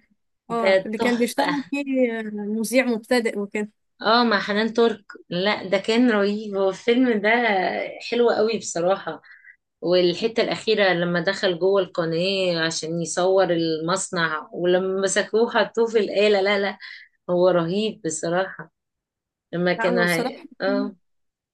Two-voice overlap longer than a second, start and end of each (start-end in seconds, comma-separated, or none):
0.5-1.7